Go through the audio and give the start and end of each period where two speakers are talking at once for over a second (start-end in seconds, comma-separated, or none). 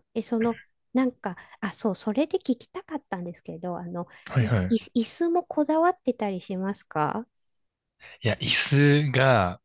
none